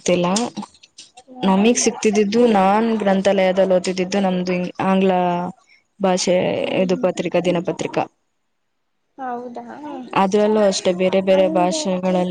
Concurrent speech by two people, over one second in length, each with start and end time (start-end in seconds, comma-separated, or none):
none